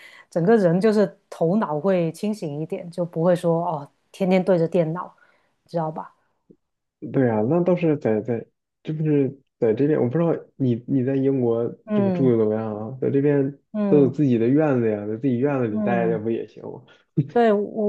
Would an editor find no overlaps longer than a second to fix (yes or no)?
yes